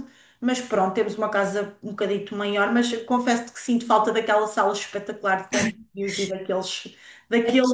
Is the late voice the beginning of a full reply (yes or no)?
no